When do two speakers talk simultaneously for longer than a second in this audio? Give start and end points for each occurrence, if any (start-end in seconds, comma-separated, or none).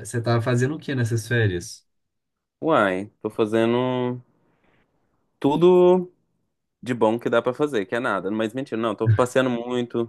none